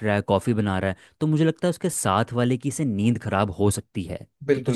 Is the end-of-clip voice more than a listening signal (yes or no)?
yes